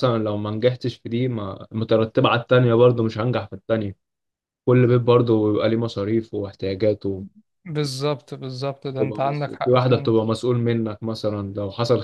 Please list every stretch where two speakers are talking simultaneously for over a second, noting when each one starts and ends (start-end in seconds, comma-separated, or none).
8.9-10.1